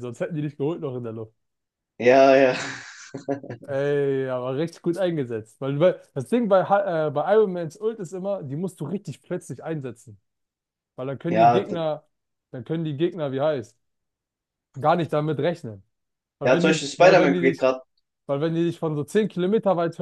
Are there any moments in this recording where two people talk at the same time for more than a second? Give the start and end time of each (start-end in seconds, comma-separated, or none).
16.4-17.7